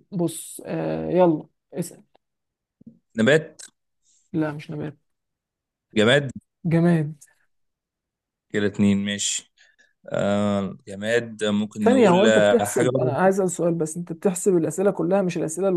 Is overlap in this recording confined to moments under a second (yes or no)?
no